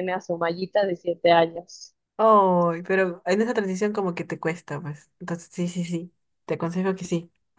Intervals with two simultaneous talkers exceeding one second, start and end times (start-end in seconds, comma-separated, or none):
none